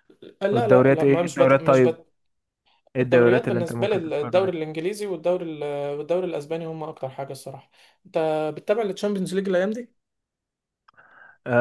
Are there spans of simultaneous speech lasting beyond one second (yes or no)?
yes